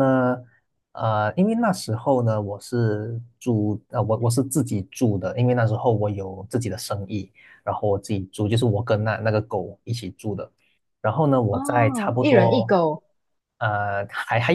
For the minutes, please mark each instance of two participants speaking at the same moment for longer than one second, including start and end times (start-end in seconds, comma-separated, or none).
11.5-12.7